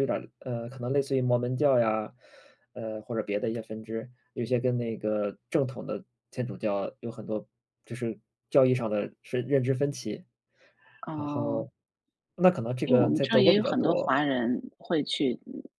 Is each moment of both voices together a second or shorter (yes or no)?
no